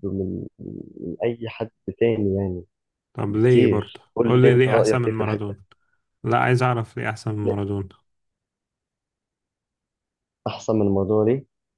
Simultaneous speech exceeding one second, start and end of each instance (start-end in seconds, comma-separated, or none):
3.3-5.6